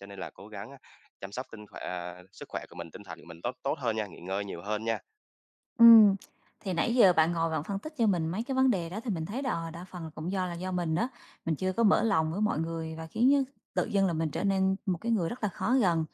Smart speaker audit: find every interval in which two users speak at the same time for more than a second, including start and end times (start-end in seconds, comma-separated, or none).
none